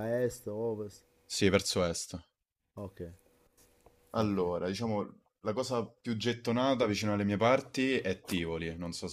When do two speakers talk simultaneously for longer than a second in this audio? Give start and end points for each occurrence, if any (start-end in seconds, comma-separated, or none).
none